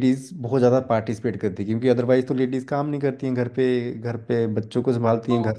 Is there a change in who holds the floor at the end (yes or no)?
no